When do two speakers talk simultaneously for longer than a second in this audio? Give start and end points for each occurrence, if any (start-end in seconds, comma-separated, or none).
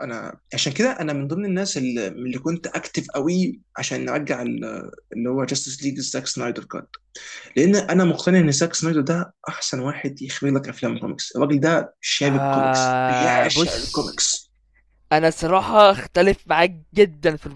12.2-14.1